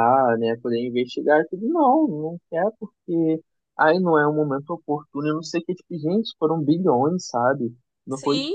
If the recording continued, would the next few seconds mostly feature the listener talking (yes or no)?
no